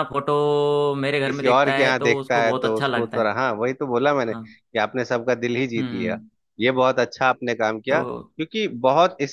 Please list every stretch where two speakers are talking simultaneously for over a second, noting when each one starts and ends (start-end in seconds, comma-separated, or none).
1.2-3.3